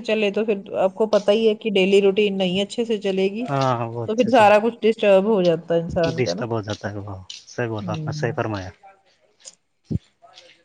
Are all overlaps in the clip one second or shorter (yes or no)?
yes